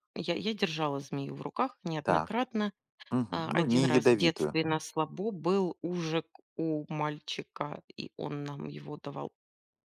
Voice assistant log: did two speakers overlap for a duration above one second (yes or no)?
yes